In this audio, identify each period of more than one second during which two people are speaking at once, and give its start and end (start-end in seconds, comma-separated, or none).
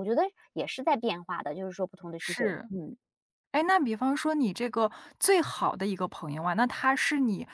none